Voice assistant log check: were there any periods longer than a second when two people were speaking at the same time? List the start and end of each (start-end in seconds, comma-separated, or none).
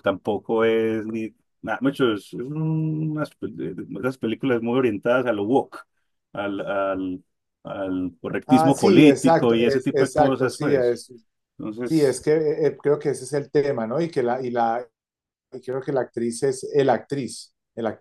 8.5-11.0